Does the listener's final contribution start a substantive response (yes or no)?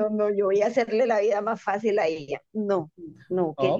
no